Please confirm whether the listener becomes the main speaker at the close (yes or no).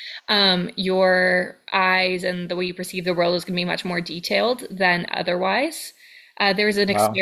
no